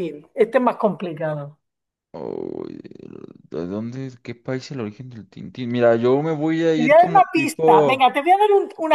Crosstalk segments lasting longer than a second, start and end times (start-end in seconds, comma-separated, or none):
6.8-8.2